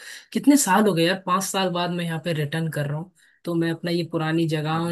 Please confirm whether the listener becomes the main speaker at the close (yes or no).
no